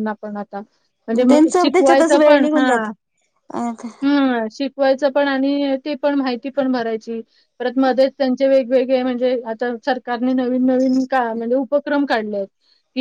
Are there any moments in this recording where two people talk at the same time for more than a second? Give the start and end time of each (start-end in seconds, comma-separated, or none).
1.3-2.7